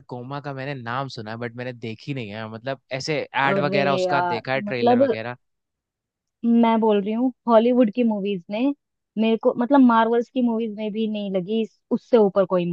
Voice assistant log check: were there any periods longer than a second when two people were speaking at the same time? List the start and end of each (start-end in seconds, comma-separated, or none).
3.5-5.2